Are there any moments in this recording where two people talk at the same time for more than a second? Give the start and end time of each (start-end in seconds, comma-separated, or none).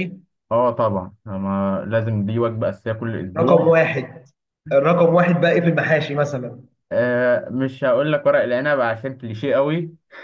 none